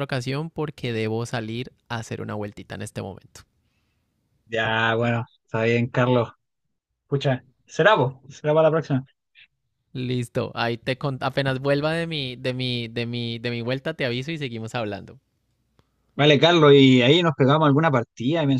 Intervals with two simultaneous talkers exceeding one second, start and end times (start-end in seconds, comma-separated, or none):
none